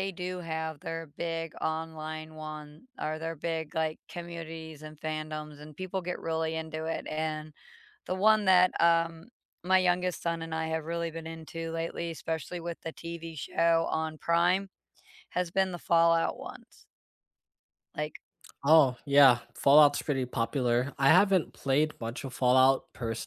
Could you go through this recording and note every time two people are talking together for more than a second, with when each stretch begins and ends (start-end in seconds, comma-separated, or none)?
none